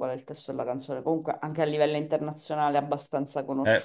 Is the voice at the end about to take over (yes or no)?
yes